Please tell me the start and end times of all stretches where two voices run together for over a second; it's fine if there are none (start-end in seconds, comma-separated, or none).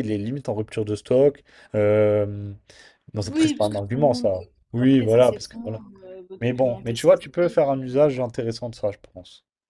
3.2-5.8, 6.4-8.2